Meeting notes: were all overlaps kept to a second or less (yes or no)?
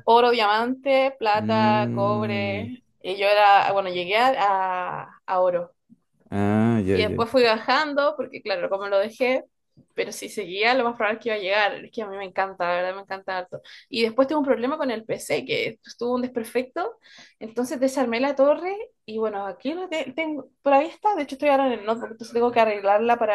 no